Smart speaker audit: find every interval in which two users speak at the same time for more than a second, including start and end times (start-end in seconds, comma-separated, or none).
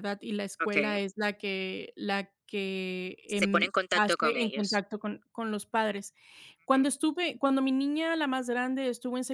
3.3-4.8